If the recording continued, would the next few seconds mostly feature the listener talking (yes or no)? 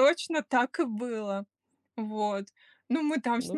no